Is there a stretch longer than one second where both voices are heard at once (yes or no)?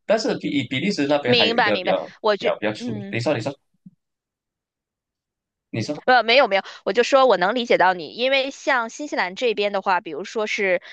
yes